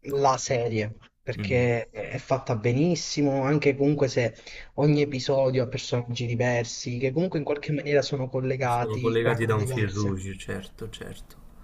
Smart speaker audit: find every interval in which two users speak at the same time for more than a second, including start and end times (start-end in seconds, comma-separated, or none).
8.7-10.2